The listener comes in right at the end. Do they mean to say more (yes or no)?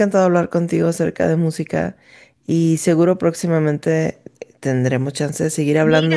yes